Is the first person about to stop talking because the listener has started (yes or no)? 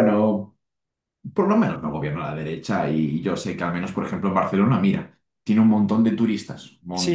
yes